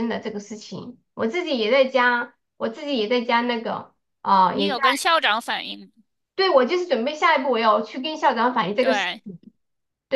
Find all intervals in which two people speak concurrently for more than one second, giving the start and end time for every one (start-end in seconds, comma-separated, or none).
none